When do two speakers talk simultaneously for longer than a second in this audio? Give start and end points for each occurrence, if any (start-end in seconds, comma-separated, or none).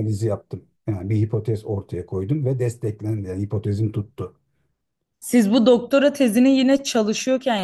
none